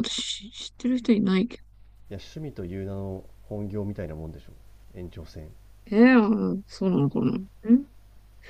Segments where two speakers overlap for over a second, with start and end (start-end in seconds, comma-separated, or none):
none